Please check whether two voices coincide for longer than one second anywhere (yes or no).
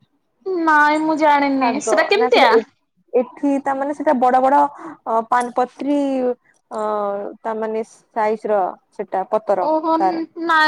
no